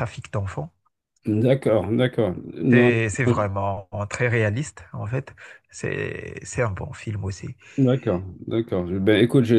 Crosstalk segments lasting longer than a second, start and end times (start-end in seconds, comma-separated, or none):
none